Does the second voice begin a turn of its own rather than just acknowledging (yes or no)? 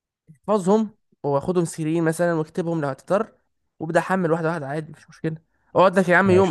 no